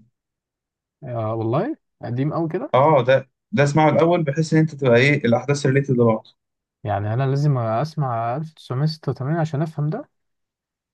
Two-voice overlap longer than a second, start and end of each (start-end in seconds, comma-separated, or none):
none